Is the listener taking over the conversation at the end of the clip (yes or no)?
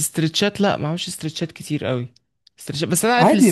no